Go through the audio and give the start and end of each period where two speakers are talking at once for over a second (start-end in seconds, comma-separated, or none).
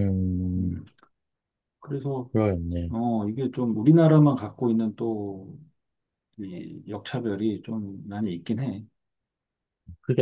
none